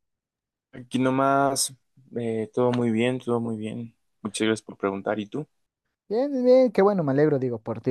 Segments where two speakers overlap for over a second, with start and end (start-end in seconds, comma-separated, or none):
none